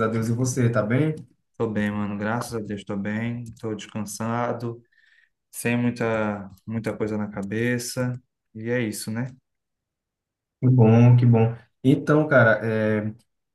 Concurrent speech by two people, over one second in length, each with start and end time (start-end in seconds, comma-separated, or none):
none